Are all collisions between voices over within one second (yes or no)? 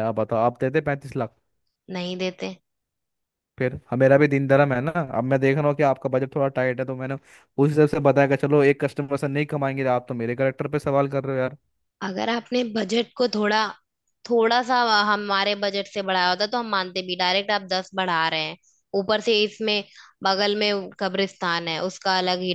yes